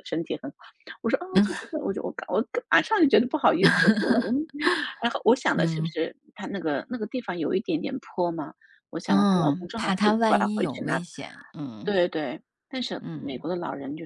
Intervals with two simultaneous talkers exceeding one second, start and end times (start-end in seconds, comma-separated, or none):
9.1-11.0